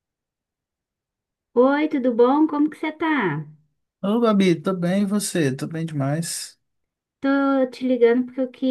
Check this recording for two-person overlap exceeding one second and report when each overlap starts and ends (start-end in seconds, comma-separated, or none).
none